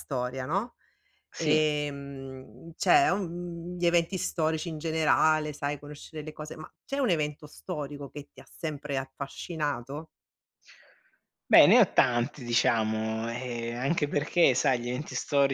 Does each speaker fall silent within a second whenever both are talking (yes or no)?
yes